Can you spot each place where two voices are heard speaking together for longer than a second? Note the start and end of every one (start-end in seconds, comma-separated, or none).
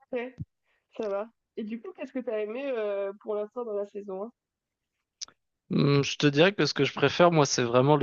none